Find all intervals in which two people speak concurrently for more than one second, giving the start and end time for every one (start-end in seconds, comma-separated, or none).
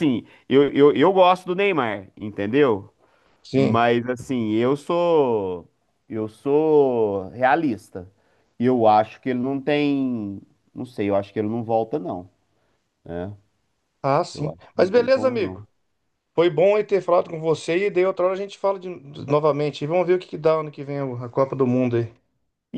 14.3-15.6